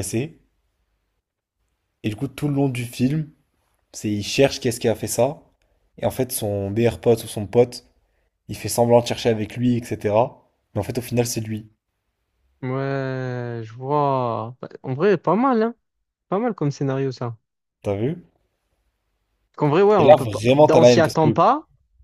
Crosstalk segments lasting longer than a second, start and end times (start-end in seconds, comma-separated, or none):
20.0-21.4